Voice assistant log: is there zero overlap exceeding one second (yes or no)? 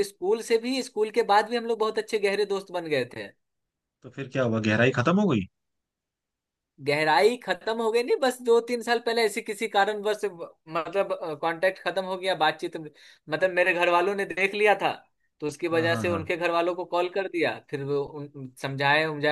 yes